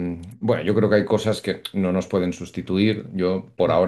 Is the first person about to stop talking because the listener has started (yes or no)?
no